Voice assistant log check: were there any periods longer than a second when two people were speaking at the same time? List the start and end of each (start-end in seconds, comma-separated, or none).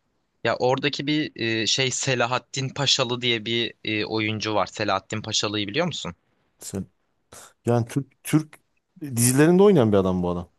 none